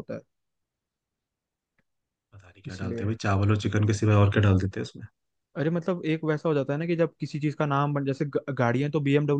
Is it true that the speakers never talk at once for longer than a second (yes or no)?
yes